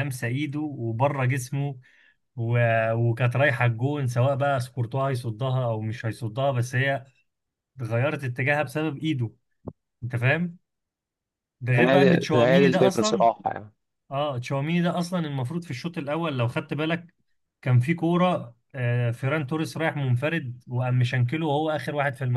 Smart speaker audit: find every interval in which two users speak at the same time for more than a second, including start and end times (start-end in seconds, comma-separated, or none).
11.8-13.2